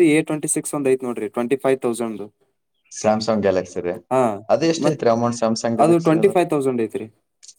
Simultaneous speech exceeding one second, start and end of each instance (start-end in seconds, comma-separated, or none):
none